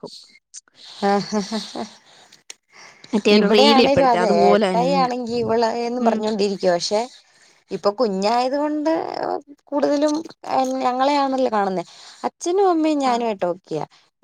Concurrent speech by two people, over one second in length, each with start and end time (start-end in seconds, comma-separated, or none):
3.4-5.1